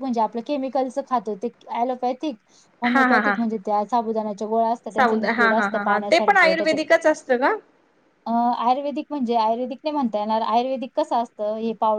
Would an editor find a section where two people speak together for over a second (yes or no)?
yes